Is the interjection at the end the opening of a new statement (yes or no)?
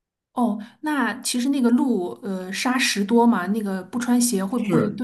yes